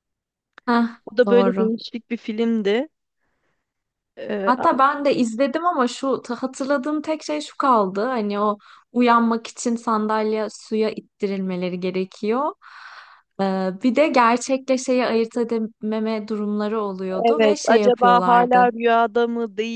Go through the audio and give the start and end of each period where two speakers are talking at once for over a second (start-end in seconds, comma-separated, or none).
17.1-18.7